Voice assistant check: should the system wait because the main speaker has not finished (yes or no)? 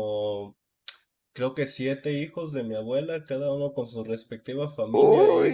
yes